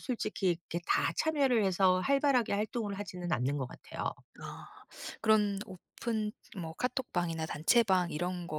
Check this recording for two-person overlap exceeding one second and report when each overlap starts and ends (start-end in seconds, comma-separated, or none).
none